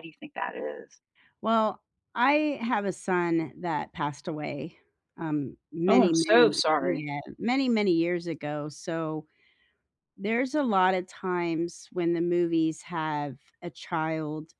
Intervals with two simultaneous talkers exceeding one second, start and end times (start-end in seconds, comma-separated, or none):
5.9-7.1